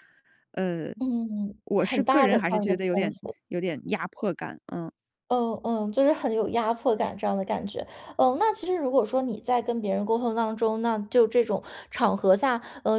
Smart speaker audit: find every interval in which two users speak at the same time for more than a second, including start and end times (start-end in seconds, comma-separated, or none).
1.6-3.4